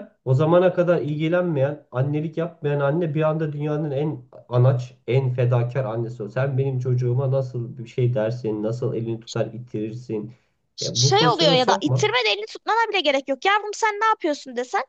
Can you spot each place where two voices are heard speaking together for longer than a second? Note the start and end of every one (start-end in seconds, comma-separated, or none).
10.8-12.1